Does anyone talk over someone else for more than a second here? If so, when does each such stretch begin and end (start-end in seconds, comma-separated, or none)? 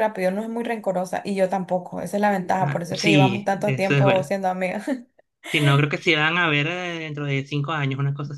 2.6-4.3